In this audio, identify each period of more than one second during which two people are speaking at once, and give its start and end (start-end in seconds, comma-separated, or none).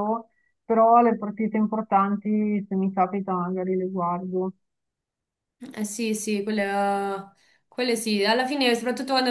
none